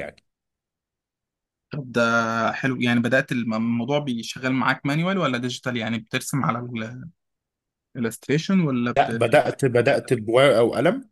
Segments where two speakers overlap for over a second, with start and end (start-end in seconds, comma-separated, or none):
none